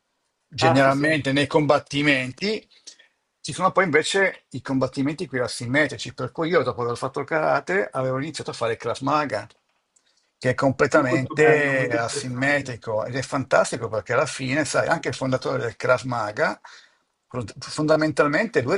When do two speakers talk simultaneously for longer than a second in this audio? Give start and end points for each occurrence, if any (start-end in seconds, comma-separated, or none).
10.9-12.8